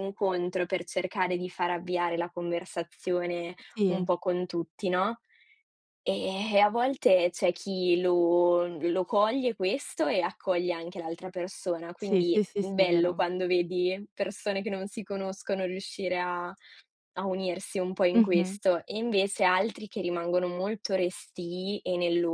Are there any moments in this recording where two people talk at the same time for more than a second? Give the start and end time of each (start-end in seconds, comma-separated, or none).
12.0-13.2